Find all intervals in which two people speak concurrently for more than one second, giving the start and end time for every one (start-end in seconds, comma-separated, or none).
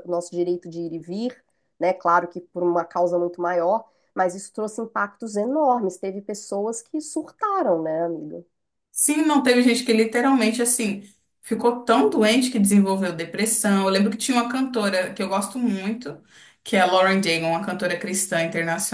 none